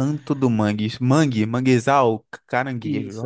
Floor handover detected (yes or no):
yes